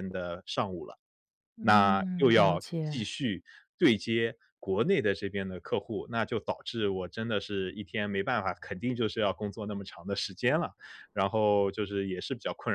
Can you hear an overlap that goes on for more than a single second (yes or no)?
yes